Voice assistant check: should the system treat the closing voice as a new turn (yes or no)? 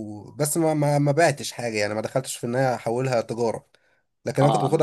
no